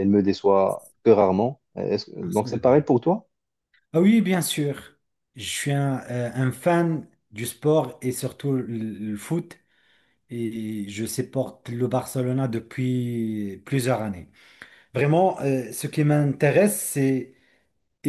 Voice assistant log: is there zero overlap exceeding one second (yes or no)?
yes